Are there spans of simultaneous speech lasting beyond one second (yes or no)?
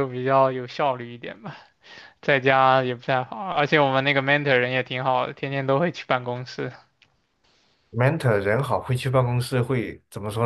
no